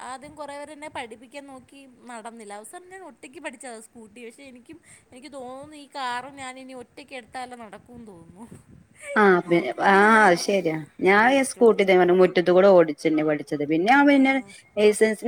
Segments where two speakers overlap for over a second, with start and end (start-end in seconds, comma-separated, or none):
9.8-11.9